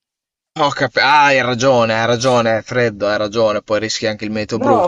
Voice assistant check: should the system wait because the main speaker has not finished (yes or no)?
no